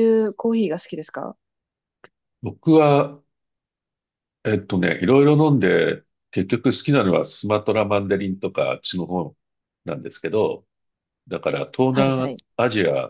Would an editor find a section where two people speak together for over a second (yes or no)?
no